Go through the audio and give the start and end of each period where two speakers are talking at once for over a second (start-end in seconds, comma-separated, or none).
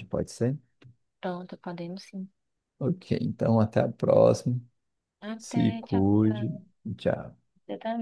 5.4-6.6